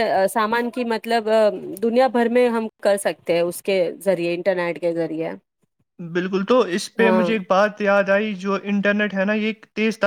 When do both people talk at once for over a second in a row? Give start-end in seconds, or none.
none